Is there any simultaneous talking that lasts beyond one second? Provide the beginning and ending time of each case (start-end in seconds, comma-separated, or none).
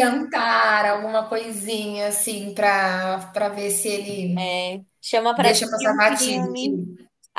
5.3-6.8